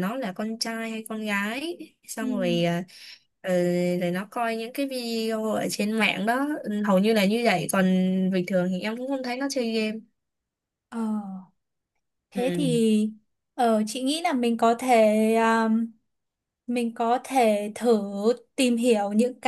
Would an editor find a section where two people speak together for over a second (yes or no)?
no